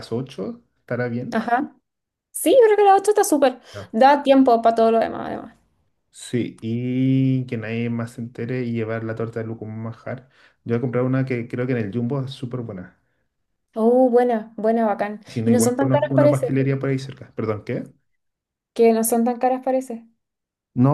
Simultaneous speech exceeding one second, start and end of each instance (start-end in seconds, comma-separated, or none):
15.3-16.6